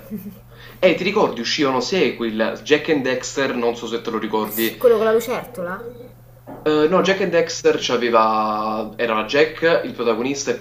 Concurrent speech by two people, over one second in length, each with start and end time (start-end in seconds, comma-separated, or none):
none